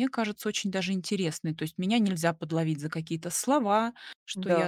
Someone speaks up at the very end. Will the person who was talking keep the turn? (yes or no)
yes